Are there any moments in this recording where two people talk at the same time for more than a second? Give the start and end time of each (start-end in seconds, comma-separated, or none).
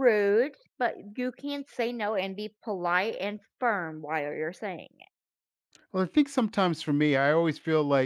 none